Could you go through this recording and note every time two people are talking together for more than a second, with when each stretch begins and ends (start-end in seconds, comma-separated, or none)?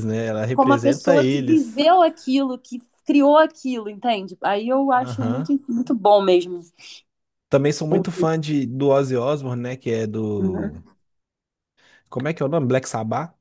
0.5-1.8